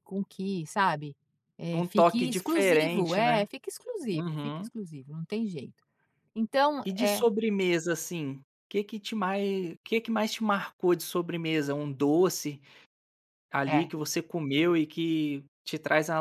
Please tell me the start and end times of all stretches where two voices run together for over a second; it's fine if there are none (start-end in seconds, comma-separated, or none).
1.7-3.5